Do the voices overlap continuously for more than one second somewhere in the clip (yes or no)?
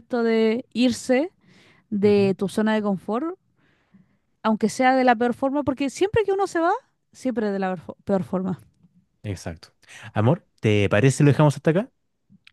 no